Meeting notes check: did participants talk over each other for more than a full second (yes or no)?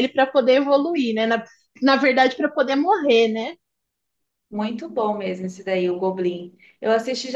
no